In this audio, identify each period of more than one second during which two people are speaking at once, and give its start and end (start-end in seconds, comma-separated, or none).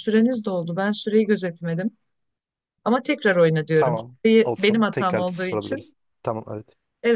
3.7-5.9